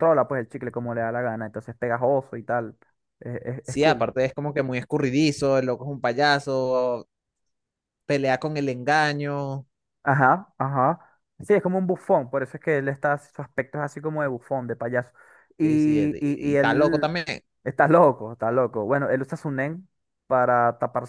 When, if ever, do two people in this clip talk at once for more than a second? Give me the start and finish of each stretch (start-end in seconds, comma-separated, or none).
15.6-17.2